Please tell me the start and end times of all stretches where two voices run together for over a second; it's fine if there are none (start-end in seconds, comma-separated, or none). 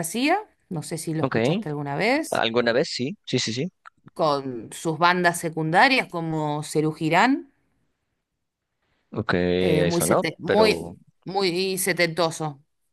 9.6-11.0